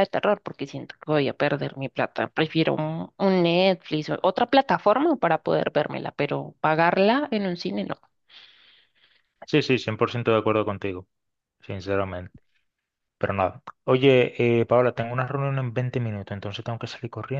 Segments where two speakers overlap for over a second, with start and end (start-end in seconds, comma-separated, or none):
none